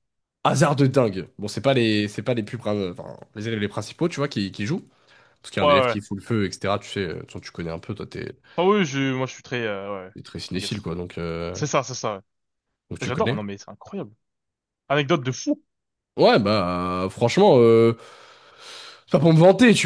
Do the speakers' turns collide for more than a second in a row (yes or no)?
no